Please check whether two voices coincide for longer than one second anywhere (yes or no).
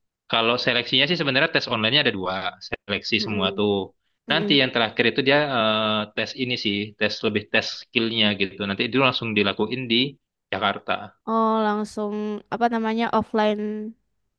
no